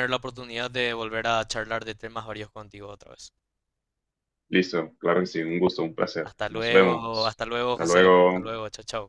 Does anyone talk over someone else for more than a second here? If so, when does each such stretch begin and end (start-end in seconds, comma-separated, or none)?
6.2-8.5